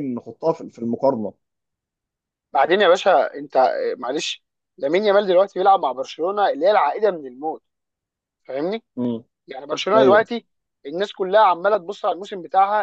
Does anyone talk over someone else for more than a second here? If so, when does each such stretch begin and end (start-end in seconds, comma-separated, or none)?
none